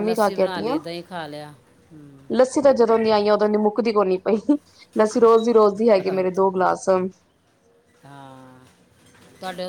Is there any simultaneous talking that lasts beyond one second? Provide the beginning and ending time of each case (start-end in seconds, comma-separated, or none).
none